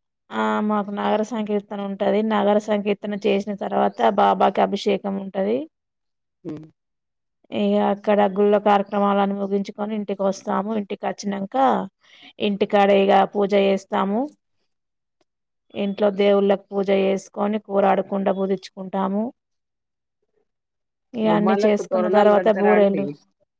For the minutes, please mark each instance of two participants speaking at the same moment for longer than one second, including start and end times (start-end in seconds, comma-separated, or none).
21.3-23.0